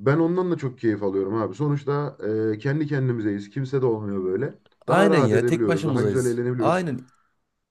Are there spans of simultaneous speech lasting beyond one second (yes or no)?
yes